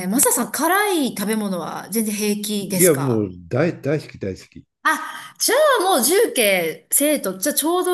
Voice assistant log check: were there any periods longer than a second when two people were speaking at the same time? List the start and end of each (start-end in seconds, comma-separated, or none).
none